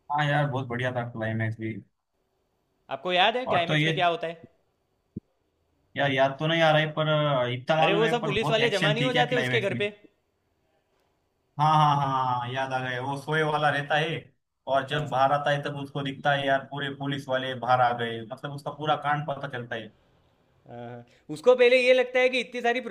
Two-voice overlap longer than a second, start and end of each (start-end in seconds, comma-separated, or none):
7.8-9.8